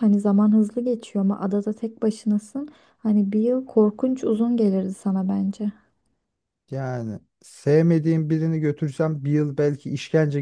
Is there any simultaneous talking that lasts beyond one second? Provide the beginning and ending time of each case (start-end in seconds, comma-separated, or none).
none